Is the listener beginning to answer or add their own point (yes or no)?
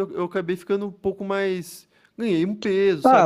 yes